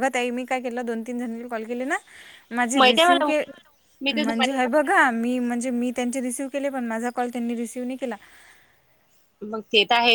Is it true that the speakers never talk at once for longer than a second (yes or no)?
yes